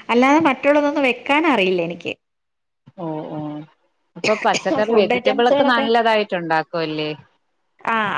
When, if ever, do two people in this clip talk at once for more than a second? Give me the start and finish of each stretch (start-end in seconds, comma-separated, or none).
none